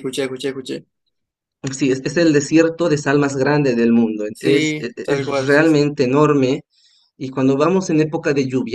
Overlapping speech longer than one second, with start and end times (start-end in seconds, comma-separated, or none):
4.3-5.8